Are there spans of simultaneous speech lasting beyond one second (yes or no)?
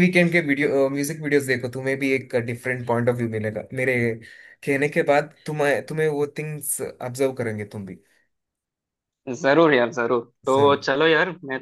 no